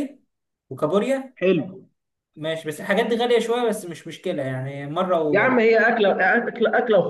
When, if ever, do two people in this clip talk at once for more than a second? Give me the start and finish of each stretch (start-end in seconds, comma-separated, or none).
none